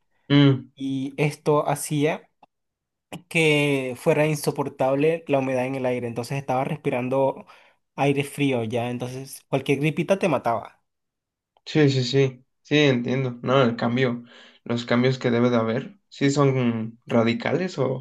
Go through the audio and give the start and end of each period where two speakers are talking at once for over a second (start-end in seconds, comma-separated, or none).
none